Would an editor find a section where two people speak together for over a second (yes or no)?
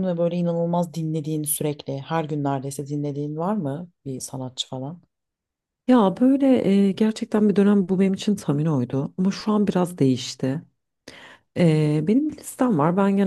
no